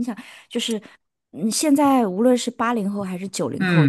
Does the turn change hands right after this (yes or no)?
yes